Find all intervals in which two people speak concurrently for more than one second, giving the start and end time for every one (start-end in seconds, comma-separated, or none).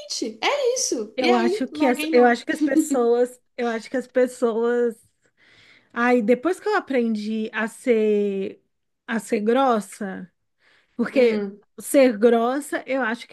1.1-2.4